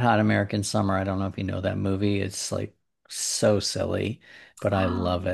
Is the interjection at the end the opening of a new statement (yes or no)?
no